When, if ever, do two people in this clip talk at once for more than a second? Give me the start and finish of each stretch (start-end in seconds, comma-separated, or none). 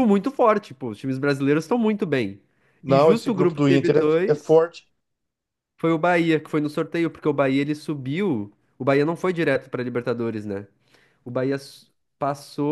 2.9-4.6